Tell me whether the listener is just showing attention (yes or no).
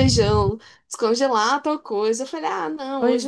yes